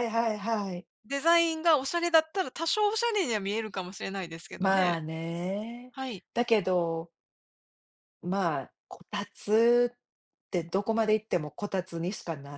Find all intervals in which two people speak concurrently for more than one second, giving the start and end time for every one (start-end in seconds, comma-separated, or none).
none